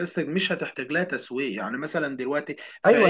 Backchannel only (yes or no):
no